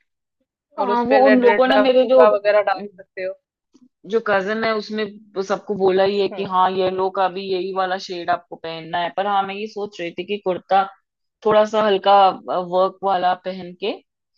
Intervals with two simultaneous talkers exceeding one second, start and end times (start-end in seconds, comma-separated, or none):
0.8-2.2